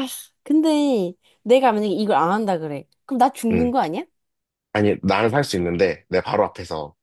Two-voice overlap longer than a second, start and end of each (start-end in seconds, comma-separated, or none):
none